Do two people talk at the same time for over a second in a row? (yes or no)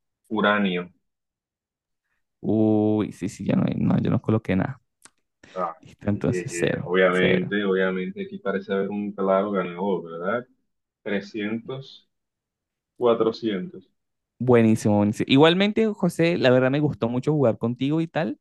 yes